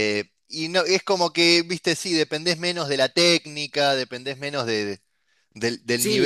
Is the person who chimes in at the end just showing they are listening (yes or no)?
yes